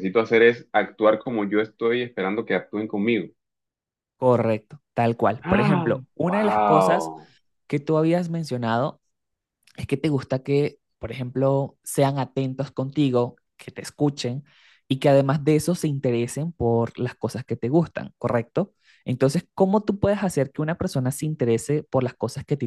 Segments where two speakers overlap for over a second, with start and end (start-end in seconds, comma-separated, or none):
5.4-7.1